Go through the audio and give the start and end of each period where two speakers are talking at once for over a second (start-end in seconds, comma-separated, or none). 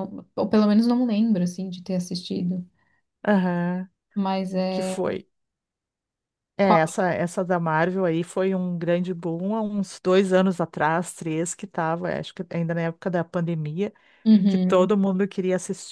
none